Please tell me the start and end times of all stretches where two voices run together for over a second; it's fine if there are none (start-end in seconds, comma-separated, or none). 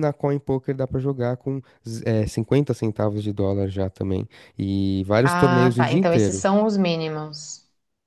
5.2-6.5